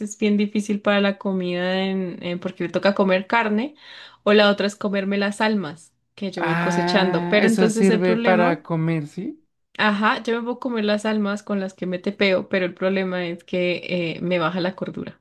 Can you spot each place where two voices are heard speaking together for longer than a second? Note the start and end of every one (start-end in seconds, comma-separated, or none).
6.4-8.6